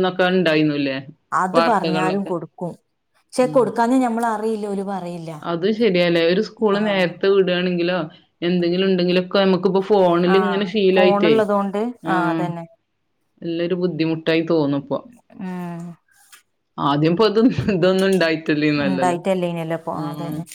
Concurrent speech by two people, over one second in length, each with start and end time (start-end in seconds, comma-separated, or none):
none